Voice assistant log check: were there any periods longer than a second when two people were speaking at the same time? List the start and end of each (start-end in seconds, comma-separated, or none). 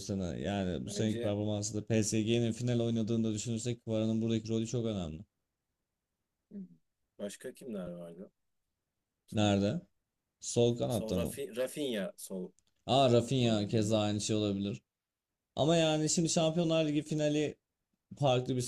none